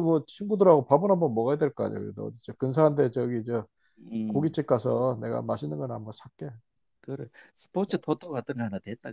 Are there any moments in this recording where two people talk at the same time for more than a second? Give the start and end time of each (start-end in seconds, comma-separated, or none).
none